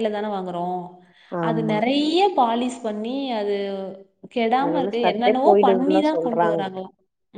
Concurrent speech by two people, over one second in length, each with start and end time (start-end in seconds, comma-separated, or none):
4.6-6.6